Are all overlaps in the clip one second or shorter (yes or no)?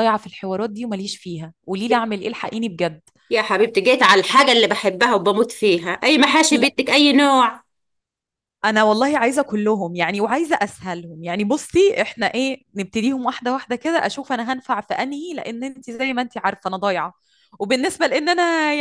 yes